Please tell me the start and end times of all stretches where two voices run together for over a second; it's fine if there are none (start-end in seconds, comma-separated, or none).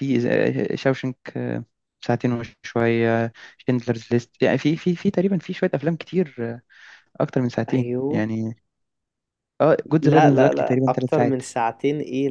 10.0-11.4